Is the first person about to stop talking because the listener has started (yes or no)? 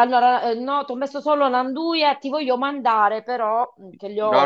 yes